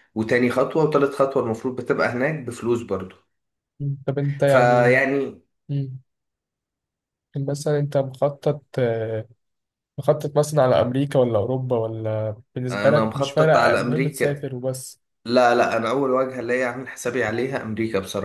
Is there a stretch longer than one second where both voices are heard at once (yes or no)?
yes